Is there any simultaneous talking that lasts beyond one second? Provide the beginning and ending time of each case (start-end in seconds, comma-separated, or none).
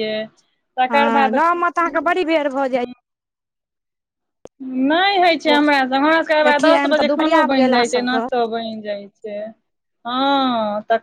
6.5-8.2